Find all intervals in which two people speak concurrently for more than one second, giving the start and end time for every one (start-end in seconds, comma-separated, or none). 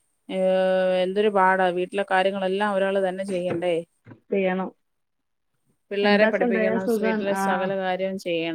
6.0-7.7